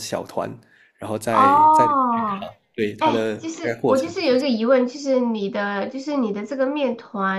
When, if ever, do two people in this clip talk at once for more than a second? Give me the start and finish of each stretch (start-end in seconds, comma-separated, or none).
3.0-4.5